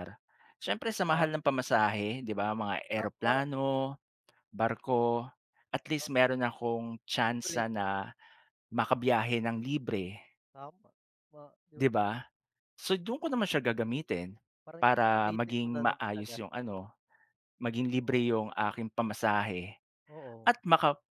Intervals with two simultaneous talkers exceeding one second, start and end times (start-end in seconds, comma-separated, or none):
14.8-16.4